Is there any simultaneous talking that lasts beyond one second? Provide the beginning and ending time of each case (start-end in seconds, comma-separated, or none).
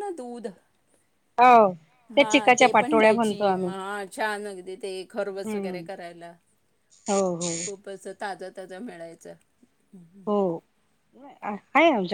2.2-3.7